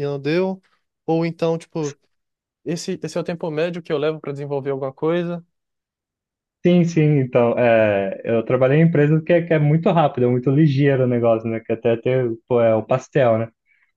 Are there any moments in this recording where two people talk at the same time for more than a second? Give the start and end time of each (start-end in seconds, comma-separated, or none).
none